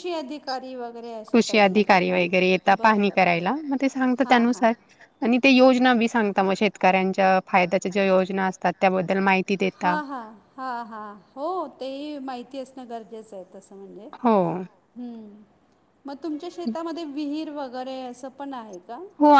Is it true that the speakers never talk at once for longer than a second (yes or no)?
no